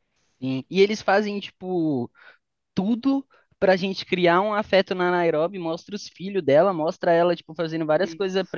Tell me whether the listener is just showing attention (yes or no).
yes